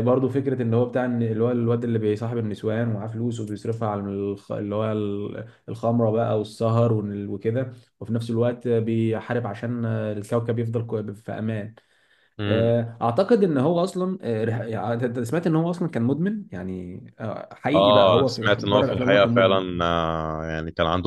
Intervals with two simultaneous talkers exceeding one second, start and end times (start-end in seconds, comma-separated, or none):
17.8-19.6